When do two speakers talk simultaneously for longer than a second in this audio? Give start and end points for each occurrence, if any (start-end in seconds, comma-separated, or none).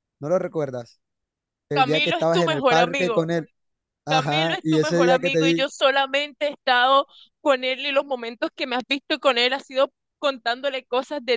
1.7-3.3, 4.1-5.6